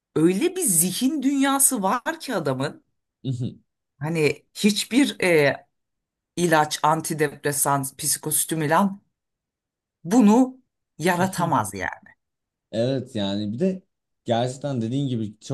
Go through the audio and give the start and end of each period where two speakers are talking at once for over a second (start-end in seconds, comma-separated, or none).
none